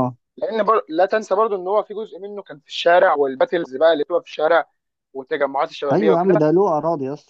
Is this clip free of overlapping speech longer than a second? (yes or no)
yes